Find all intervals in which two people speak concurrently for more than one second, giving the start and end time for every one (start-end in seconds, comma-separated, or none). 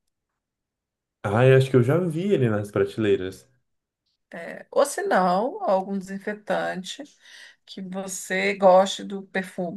none